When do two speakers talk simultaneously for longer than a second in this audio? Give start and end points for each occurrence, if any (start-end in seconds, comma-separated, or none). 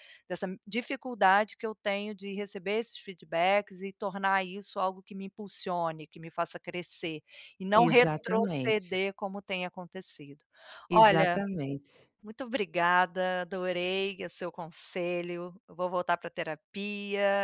7.8-9.0